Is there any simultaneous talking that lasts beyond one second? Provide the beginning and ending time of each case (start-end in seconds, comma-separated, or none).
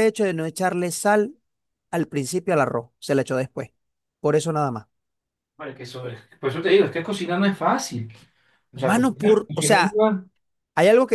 8.7-10.0